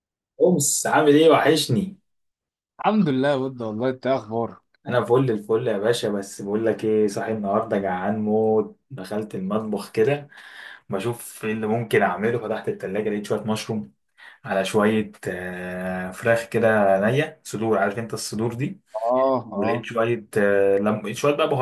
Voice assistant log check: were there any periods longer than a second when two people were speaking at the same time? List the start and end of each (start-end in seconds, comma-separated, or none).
none